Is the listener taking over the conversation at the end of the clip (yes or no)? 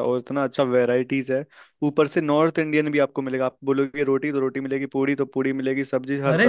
no